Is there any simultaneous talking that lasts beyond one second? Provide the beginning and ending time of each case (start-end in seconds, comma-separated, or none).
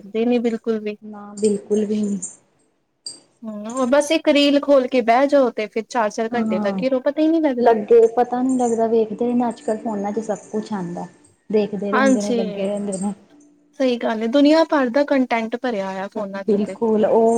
none